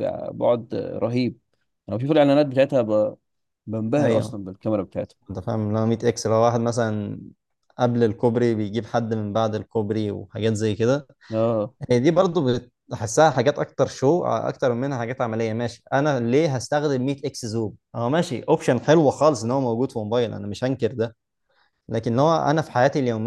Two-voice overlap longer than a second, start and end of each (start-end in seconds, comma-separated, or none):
none